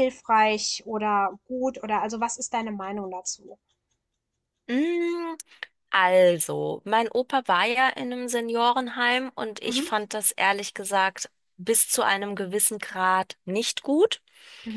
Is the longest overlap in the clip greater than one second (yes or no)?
no